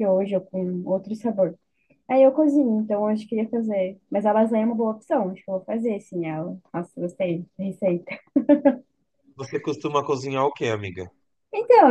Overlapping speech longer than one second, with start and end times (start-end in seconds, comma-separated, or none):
none